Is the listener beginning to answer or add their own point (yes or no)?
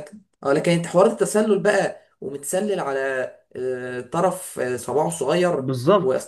yes